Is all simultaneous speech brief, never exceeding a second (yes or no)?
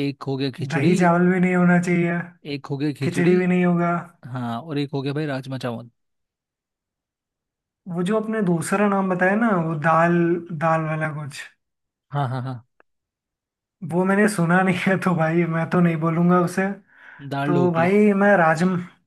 yes